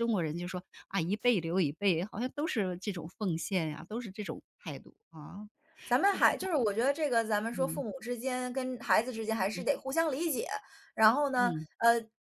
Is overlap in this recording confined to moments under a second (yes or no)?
yes